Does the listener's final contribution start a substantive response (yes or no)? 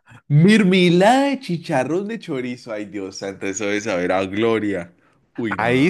yes